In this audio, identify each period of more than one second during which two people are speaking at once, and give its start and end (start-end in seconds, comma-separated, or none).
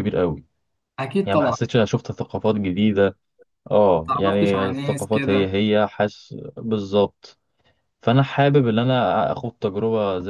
4.0-5.5